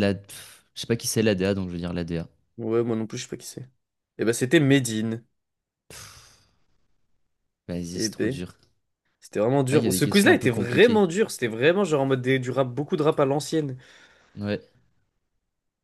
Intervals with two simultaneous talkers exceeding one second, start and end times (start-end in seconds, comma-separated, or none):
9.7-11.1